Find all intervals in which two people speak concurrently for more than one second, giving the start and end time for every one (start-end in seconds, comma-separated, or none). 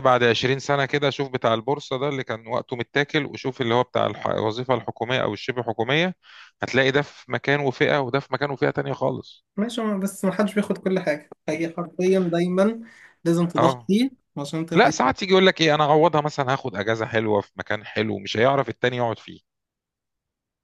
none